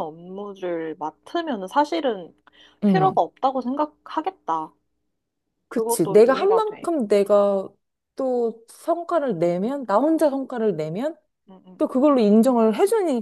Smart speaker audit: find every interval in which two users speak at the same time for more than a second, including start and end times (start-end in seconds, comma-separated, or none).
5.7-6.9